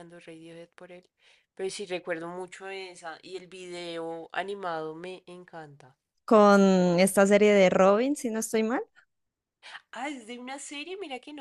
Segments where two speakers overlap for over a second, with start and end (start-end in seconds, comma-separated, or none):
none